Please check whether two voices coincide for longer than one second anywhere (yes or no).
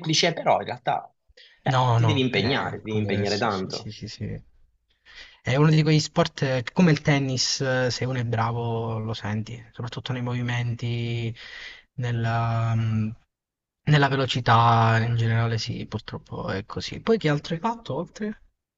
yes